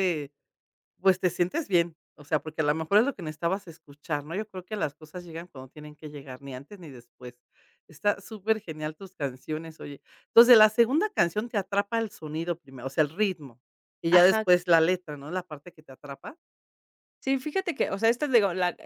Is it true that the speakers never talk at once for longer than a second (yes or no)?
yes